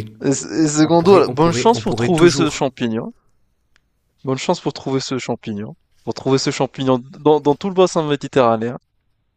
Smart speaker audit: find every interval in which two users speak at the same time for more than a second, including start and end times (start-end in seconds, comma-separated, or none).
0.8-2.7